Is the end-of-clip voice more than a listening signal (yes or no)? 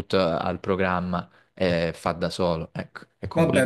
yes